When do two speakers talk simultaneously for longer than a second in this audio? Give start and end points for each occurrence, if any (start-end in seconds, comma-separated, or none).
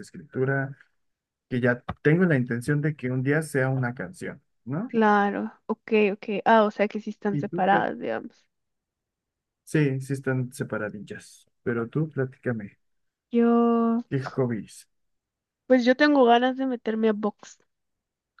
none